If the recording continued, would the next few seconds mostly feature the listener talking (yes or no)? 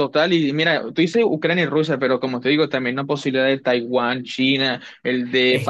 yes